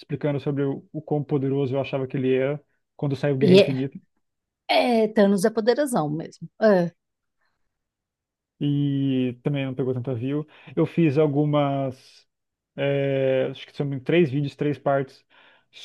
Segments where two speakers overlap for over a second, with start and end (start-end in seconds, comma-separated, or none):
none